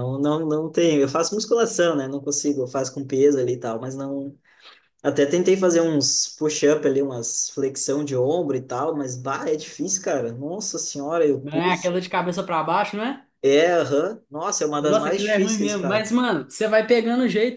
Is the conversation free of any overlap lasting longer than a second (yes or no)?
no